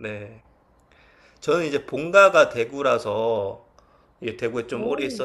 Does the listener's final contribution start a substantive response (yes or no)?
no